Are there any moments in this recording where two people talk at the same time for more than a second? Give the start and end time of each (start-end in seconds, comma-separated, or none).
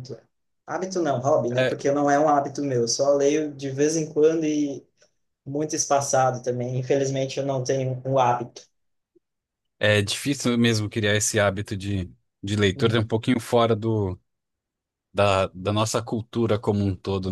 none